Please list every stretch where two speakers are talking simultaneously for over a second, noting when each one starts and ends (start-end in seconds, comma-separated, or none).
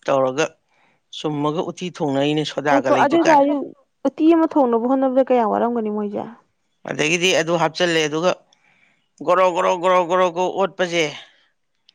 none